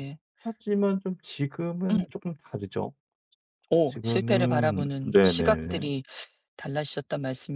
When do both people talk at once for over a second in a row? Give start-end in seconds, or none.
3.8-5.8